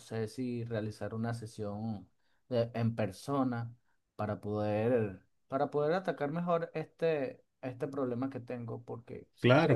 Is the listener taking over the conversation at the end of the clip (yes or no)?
yes